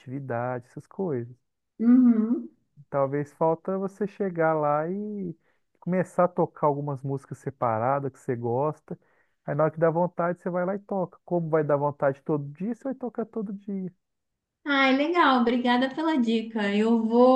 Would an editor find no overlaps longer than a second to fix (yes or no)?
yes